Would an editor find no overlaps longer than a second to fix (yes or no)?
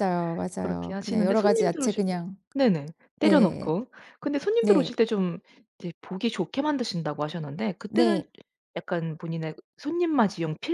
no